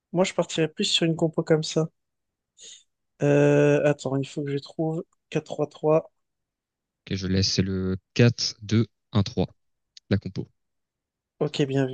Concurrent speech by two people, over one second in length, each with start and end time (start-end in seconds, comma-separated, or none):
none